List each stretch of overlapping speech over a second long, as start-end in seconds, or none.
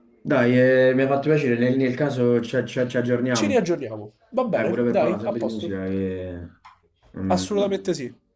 4.4-5.8